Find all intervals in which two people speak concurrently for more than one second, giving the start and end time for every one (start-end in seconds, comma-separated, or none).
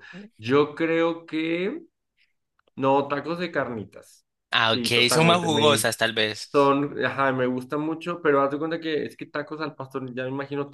4.7-5.9